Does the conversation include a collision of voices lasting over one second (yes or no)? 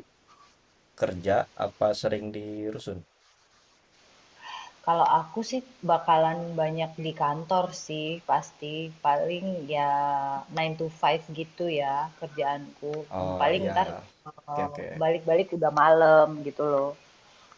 no